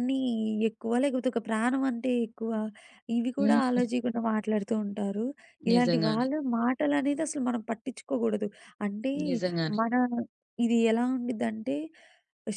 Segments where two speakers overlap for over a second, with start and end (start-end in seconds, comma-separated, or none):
none